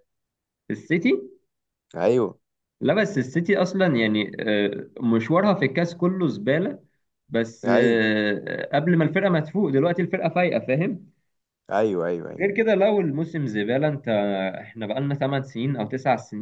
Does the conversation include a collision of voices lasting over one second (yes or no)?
no